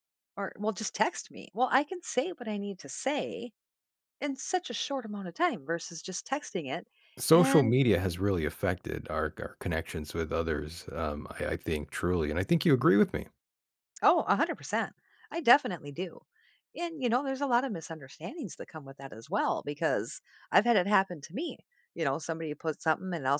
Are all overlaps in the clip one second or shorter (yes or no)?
yes